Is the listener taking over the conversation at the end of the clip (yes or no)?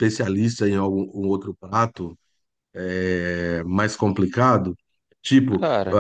no